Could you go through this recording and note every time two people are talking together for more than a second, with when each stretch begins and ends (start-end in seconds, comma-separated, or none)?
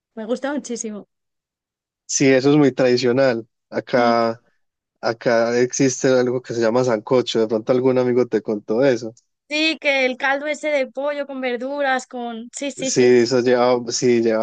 none